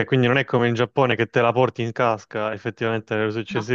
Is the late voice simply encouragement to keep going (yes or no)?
yes